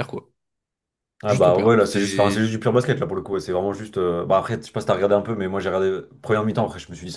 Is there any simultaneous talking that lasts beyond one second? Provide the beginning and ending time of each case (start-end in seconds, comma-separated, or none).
1.3-2.5